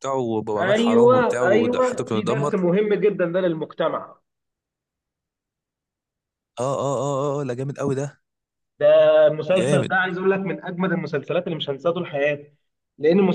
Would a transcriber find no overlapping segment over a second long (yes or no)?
no